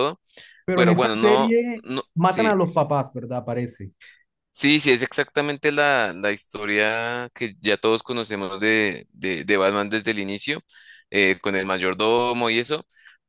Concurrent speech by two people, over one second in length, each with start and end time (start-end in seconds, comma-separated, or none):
0.7-2.5